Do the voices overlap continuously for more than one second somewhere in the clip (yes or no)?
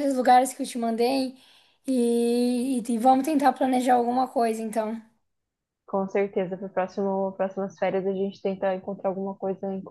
no